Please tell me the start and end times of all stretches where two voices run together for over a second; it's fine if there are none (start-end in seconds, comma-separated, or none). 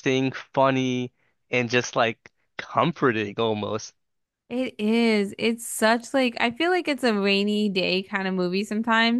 none